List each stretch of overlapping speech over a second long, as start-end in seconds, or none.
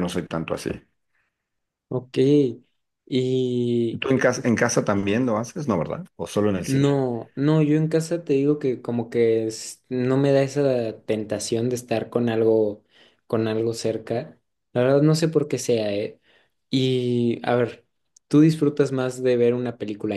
none